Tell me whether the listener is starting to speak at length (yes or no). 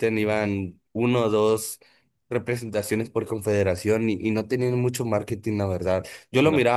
no